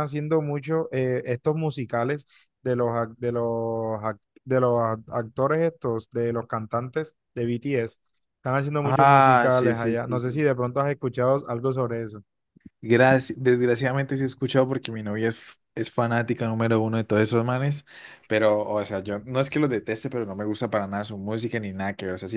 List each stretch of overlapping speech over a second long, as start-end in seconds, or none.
8.8-10.5